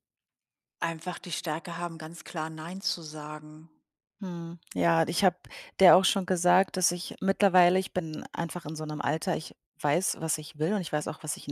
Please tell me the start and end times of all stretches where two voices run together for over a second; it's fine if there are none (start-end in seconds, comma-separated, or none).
none